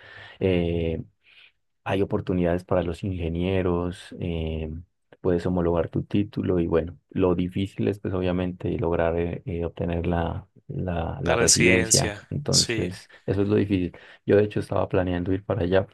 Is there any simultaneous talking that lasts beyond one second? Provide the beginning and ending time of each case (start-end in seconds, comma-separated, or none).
11.2-12.9